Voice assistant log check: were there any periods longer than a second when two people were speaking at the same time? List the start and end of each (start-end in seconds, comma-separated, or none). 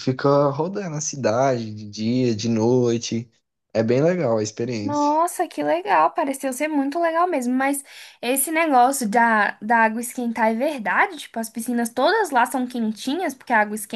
none